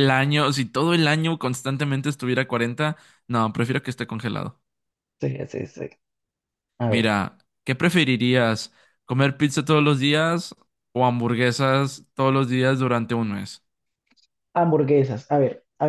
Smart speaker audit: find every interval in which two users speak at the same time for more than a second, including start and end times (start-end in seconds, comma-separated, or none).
none